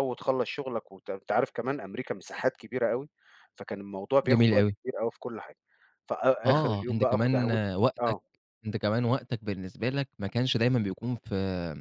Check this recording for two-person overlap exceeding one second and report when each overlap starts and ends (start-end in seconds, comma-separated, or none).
6.4-8.2